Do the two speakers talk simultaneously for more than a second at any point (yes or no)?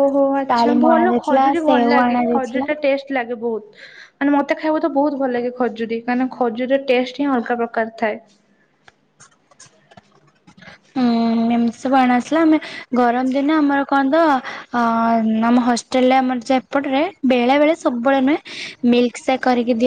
yes